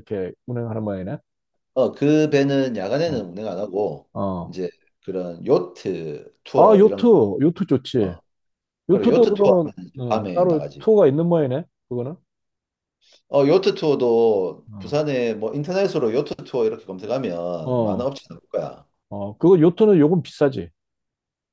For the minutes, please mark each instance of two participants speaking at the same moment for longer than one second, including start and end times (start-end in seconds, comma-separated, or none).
8.9-10.9